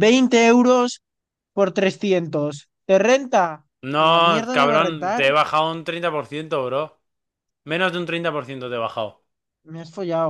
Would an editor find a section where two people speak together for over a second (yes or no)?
yes